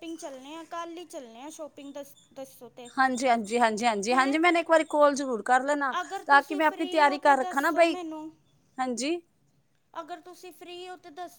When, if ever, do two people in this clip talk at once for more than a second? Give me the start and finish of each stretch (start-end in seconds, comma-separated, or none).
6.0-8.0